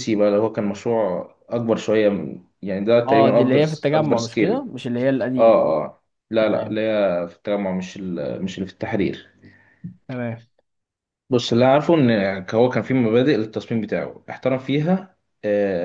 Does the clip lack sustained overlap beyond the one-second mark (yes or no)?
no